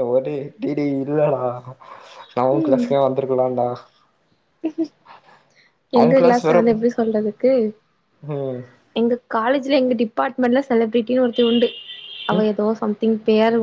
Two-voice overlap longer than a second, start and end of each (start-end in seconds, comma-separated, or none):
none